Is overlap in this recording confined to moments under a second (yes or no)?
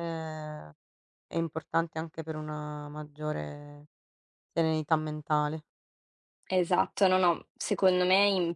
yes